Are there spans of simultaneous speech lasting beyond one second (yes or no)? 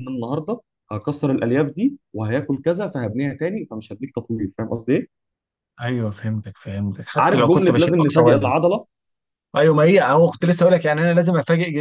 yes